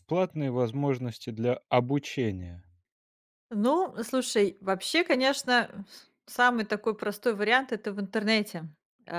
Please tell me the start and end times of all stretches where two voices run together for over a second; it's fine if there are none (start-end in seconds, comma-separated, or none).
none